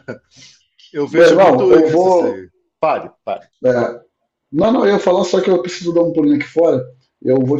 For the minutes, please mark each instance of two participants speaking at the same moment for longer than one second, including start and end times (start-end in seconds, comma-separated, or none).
1.1-2.4